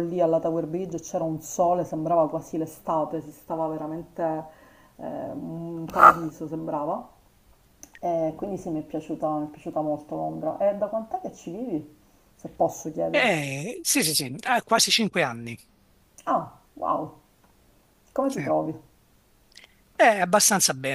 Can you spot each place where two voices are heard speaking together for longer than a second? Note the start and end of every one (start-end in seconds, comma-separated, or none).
none